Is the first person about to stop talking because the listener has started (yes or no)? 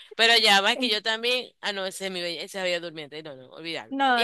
yes